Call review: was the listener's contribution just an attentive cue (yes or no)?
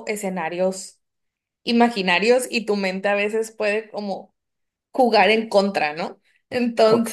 yes